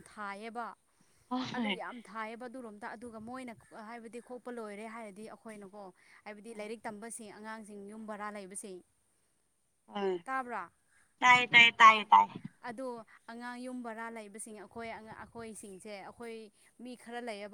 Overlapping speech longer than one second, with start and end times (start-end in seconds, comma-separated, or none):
none